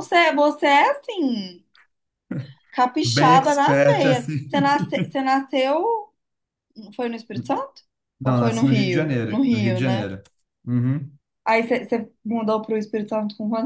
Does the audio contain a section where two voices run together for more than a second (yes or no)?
yes